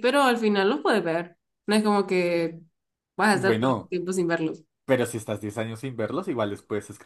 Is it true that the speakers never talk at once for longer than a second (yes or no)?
yes